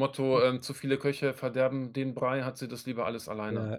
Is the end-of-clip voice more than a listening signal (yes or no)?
yes